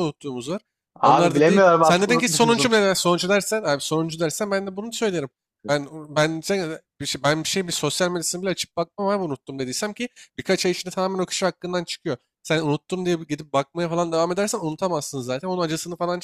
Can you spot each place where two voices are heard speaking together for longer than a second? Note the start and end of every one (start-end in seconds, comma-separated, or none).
1.0-2.8